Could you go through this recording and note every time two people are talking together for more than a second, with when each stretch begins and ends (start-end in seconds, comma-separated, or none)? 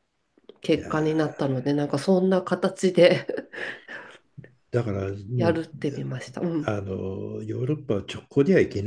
none